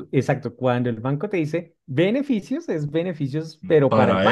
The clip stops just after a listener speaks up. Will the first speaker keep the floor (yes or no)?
no